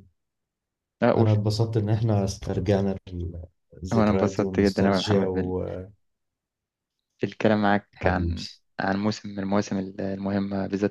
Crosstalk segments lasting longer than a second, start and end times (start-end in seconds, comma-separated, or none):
3.9-5.2